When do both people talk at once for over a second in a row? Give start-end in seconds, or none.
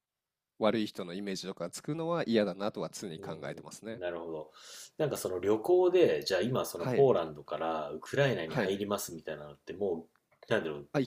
none